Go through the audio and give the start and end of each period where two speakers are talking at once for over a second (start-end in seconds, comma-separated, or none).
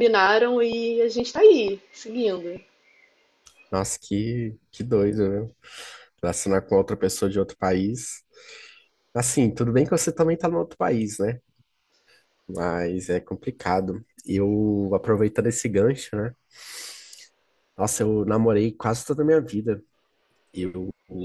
none